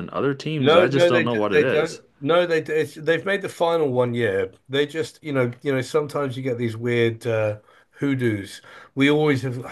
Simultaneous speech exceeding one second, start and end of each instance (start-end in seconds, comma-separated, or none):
0.6-2.0